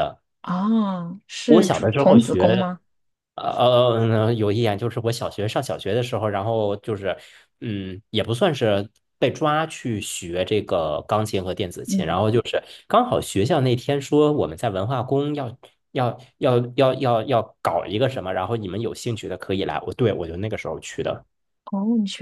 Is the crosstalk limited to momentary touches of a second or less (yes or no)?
no